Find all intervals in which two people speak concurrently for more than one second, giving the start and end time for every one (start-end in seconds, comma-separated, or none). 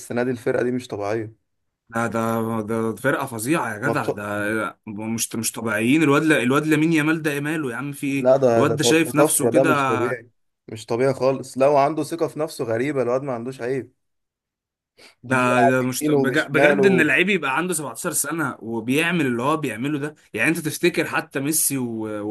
8.2-9.9, 15.3-17.1